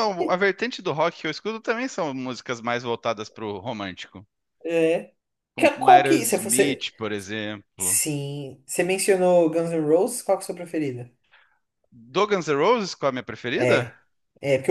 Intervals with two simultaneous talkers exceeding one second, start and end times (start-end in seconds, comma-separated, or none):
5.5-6.9